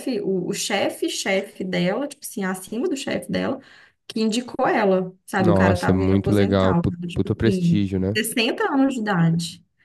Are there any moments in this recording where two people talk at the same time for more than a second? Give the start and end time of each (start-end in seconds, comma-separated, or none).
5.4-8.2